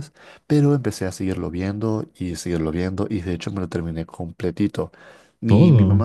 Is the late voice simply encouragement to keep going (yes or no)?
yes